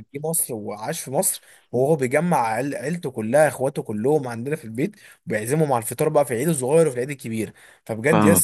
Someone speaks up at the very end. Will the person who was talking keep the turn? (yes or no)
yes